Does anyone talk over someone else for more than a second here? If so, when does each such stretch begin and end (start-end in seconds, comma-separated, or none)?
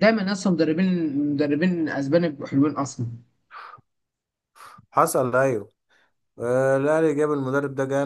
none